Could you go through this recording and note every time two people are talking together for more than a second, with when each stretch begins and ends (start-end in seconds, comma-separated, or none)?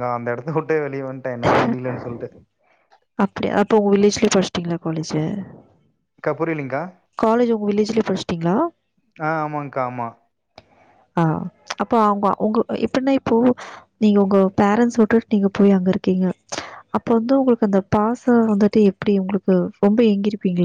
none